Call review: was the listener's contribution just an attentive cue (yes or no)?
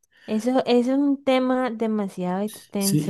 no